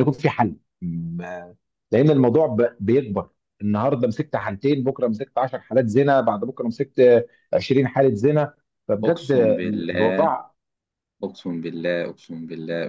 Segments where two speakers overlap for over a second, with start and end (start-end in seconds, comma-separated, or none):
9.0-10.3